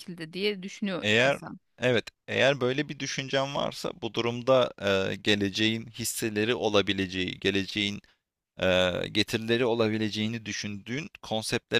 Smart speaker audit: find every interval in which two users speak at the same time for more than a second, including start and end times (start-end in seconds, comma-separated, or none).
none